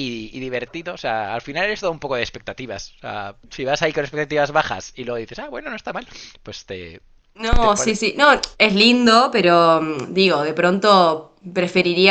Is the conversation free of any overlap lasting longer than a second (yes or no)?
yes